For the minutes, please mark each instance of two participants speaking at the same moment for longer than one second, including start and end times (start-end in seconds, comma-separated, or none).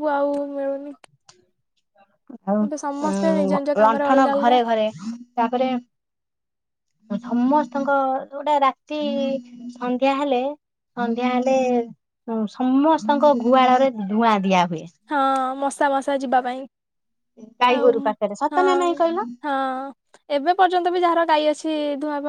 2.7-4.6